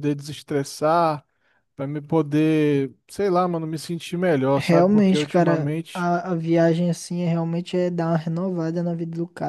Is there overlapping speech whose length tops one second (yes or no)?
yes